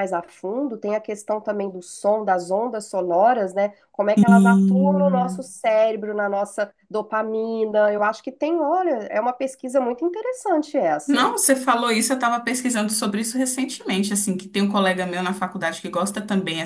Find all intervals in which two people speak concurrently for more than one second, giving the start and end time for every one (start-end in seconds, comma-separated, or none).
4.2-5.5